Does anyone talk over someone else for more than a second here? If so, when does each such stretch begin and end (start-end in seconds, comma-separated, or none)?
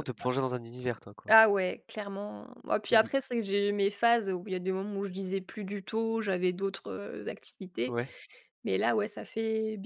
none